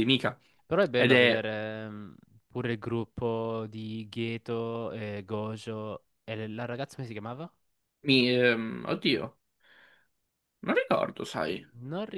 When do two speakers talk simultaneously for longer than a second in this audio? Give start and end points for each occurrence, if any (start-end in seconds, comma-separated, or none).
none